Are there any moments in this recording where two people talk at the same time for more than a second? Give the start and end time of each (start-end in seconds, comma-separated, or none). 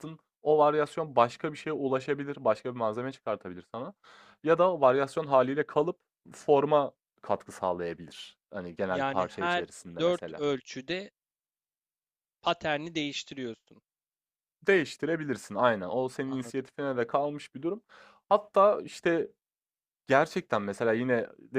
8.9-10.4